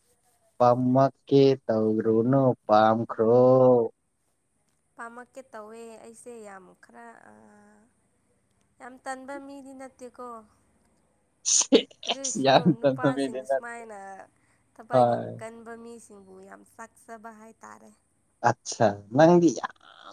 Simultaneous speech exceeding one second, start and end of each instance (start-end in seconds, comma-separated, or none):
12.1-13.7